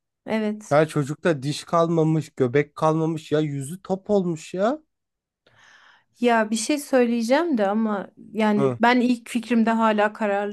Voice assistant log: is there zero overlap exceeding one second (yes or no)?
yes